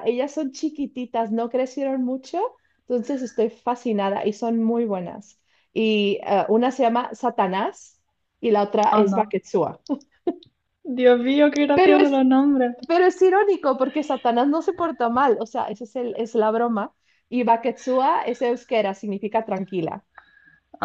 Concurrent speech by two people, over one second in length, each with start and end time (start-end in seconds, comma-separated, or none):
none